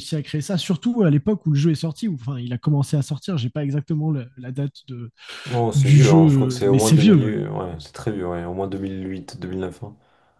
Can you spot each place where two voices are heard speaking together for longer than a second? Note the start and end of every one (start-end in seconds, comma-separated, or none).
5.7-7.3